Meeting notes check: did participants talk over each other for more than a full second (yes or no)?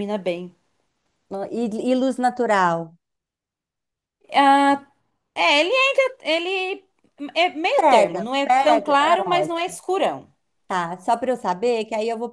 yes